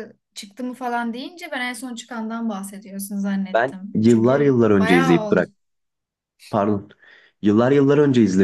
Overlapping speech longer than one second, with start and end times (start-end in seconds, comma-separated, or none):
3.5-5.4